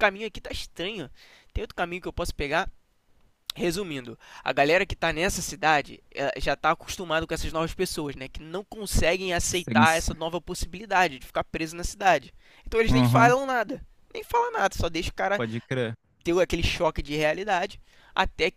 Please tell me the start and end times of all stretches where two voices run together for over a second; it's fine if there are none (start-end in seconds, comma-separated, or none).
none